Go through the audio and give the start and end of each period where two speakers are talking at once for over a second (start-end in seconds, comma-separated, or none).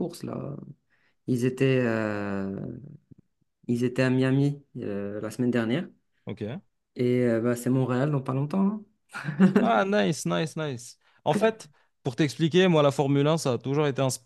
none